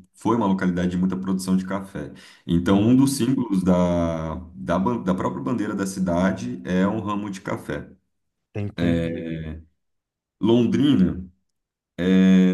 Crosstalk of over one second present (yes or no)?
no